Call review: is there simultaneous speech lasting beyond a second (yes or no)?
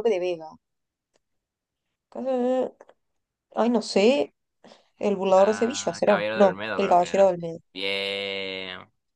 yes